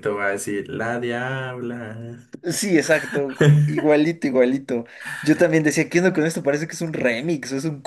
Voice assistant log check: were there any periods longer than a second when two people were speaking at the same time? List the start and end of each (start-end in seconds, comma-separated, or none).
none